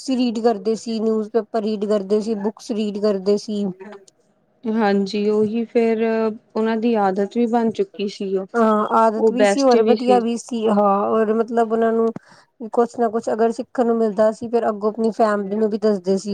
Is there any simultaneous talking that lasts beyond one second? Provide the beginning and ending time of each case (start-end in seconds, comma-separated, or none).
none